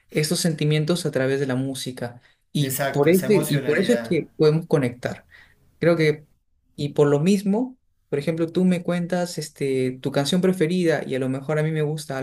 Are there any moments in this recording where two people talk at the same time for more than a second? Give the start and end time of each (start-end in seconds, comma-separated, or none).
2.6-4.3